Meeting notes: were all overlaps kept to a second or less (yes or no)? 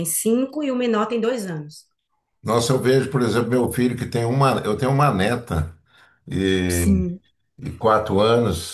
yes